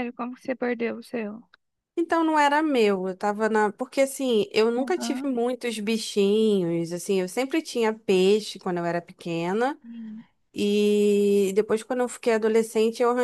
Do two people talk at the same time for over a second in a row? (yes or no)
no